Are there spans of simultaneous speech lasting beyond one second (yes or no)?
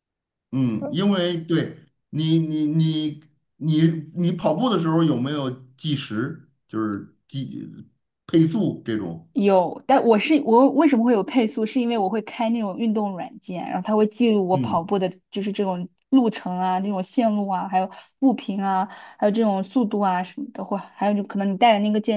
no